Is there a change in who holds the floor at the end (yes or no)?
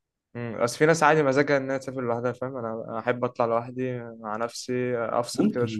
yes